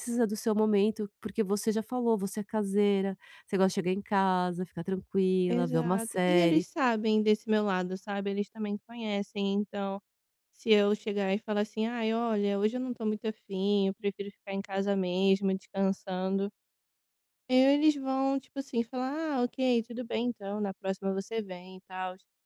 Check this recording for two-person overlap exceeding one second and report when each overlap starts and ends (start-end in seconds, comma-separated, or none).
5.5-6.7